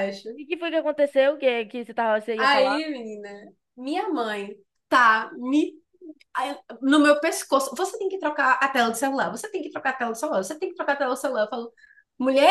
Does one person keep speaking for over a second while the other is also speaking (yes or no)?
no